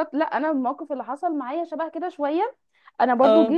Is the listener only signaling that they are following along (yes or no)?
yes